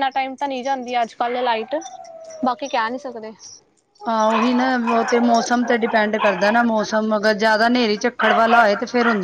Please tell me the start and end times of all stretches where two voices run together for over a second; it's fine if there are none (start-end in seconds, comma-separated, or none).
none